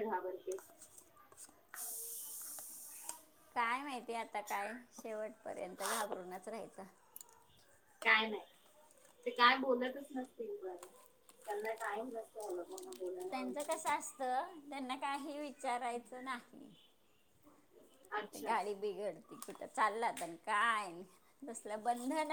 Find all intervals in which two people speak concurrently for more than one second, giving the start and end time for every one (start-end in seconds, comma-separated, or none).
none